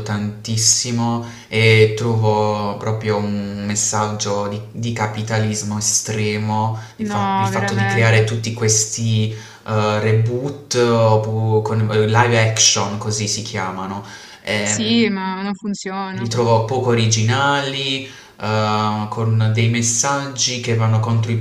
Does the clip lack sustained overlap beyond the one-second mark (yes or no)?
no